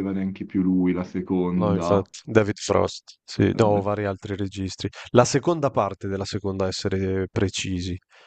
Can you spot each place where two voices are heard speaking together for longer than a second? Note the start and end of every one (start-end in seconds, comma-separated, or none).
none